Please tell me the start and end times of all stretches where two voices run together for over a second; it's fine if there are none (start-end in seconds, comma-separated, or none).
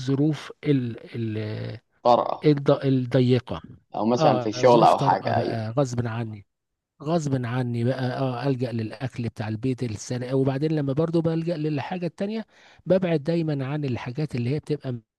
4.2-5.6